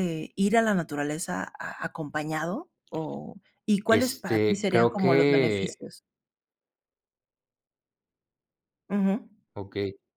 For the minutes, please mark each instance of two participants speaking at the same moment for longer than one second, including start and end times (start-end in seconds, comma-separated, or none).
3.9-5.8